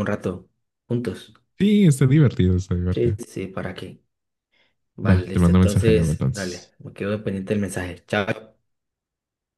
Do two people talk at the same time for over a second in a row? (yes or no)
yes